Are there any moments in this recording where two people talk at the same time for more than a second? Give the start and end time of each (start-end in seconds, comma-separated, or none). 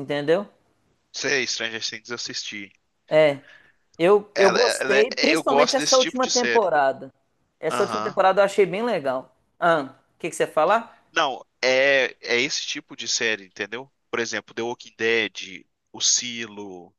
4.3-6.7